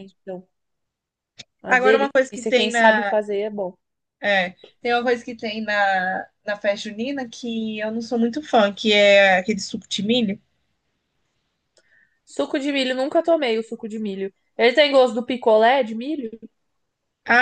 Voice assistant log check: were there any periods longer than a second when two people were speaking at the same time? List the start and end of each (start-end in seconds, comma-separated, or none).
1.7-3.2